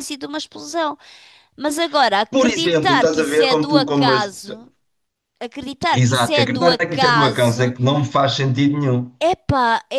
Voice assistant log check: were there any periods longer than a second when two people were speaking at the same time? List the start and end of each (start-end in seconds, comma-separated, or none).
2.3-4.2, 5.9-7.7